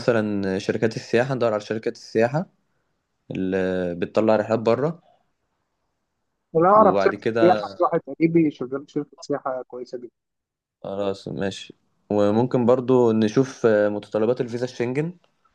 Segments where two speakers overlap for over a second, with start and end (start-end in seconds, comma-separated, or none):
6.8-8.0